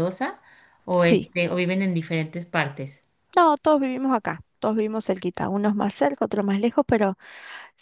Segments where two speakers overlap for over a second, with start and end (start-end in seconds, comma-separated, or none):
none